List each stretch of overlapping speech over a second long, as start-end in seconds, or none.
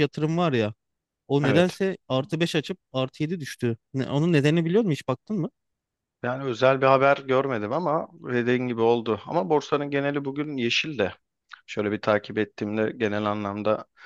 none